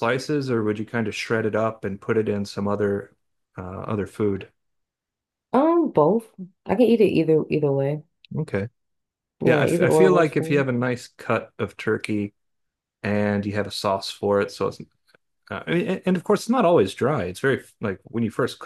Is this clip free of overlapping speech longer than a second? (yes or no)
no